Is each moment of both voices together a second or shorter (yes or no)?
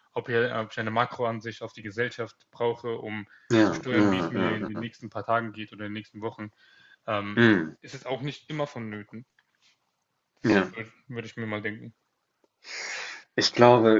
no